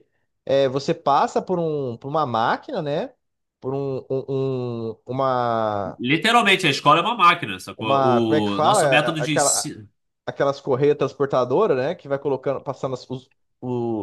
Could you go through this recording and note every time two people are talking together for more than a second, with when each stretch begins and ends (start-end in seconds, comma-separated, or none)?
7.8-9.7